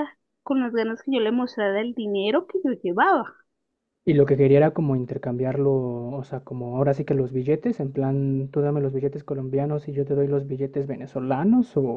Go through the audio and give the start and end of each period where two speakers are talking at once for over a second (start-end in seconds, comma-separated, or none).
none